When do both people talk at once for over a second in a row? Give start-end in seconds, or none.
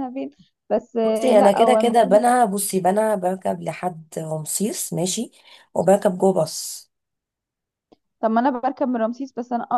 1.0-2.2